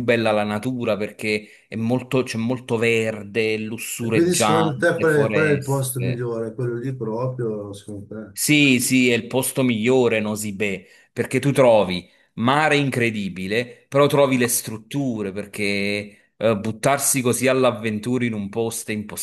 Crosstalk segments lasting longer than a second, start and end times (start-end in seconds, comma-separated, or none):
4.0-6.3